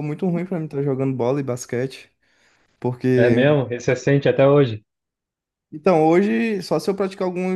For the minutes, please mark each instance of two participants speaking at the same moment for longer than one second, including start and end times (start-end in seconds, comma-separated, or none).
none